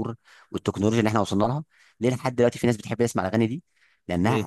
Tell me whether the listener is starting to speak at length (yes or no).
no